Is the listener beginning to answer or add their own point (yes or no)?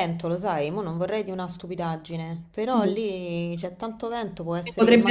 yes